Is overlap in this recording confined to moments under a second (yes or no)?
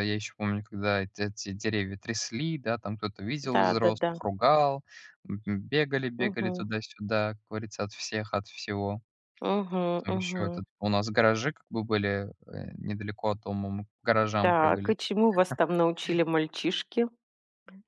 yes